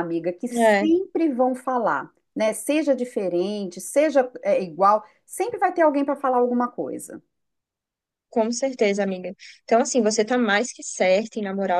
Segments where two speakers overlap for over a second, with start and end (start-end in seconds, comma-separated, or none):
none